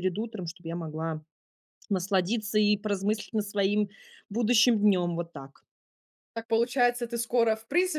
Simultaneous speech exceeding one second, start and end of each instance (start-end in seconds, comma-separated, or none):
none